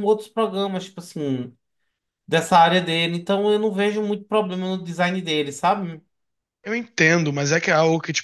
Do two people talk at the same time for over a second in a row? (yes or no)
no